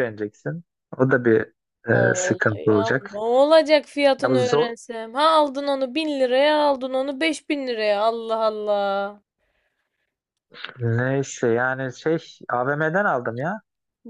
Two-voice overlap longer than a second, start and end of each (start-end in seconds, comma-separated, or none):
1.9-3.2